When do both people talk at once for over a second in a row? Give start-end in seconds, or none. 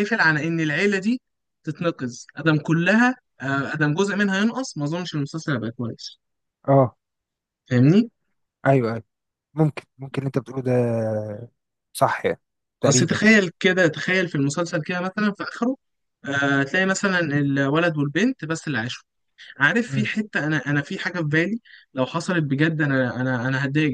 none